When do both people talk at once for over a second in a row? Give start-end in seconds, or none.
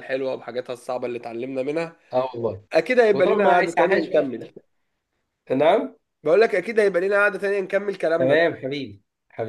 3.1-4.4